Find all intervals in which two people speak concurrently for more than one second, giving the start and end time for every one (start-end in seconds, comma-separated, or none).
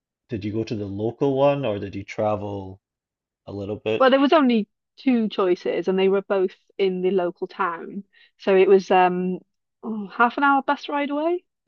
none